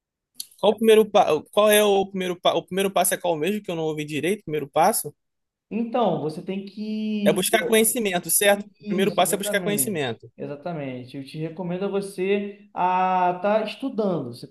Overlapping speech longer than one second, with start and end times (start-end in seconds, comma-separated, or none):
8.8-10.3